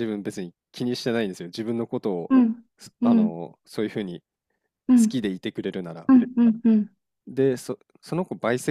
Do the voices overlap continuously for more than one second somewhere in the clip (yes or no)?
no